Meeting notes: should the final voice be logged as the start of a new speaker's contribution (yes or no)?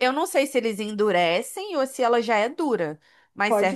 yes